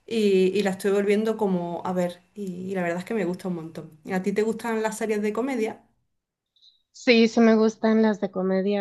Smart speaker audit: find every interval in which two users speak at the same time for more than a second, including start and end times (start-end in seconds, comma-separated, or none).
none